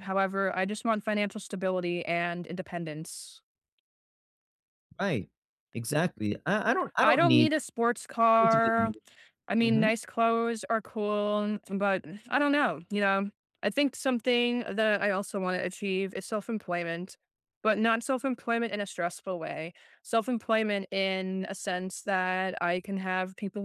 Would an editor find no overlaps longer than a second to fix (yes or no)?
yes